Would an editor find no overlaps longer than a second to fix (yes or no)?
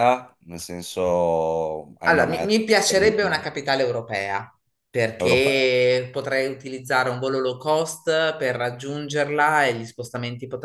no